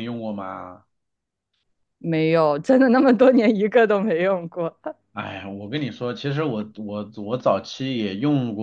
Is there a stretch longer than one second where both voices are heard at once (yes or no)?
no